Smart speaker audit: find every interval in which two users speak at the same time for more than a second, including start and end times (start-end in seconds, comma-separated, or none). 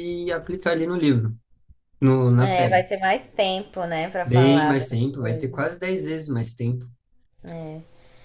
4.2-5.7